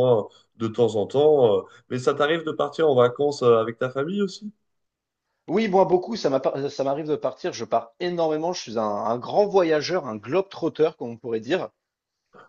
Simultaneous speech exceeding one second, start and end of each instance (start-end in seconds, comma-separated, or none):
none